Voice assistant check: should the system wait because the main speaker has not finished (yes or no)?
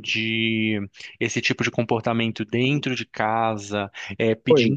yes